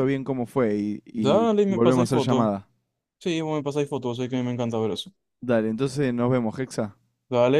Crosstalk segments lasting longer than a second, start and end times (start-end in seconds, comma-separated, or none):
1.1-2.5